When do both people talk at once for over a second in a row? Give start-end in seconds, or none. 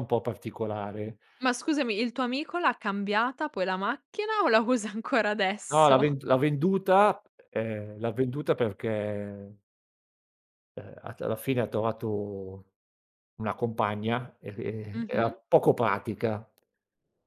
none